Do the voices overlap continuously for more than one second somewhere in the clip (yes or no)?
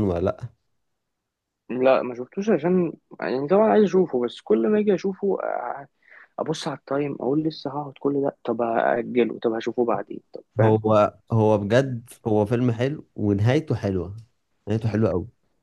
no